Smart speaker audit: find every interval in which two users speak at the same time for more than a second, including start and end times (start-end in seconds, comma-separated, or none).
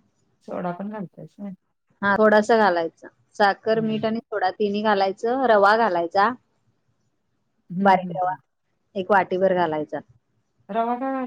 none